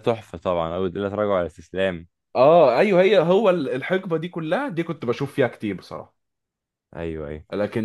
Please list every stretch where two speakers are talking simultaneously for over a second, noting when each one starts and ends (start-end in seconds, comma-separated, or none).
none